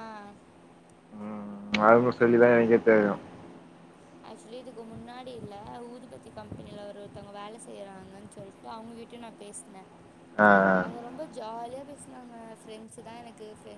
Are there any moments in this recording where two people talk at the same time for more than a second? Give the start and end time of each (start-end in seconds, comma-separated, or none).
none